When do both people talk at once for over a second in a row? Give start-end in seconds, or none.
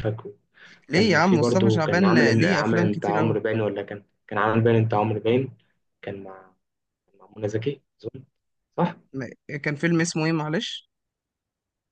0.9-3.4